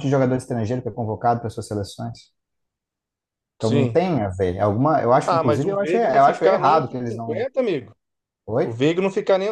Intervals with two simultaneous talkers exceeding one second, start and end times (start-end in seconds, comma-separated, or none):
5.3-7.5